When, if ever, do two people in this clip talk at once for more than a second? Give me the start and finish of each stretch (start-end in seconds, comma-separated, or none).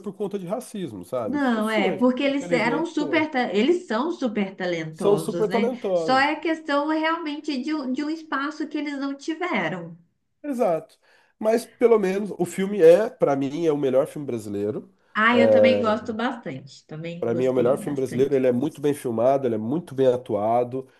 1.2-3.2, 4.9-6.3, 17.2-18.4